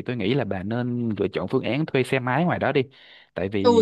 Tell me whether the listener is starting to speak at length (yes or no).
yes